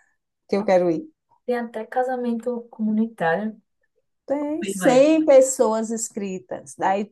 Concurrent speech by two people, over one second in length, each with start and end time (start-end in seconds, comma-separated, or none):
none